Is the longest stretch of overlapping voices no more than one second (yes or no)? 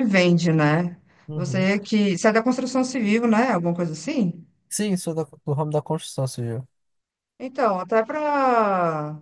yes